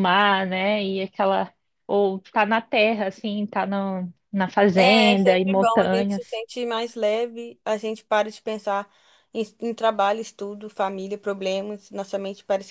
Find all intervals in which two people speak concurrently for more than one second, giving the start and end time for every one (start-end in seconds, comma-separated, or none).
4.8-6.4